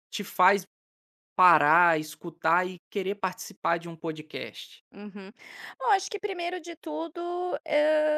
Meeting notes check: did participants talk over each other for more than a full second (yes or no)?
no